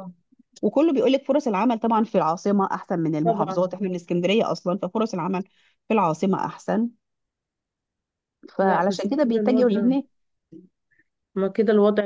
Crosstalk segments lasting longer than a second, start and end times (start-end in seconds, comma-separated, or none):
8.6-9.9